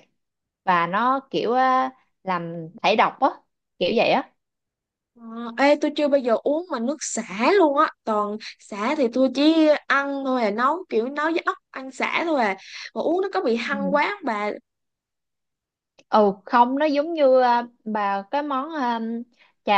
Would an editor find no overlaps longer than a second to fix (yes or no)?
yes